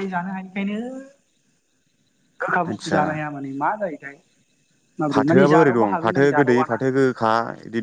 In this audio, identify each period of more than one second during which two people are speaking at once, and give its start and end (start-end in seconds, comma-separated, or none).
5.1-6.8